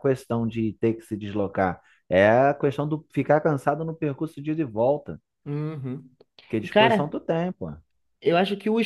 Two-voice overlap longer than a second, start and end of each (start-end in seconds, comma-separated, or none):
none